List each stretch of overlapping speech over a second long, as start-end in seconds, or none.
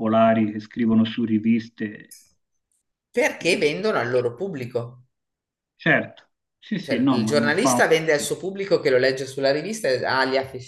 6.8-8.3